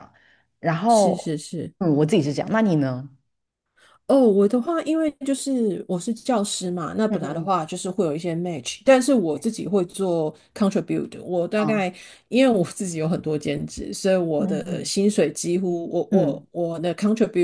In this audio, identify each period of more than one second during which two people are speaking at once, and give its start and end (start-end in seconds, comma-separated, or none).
none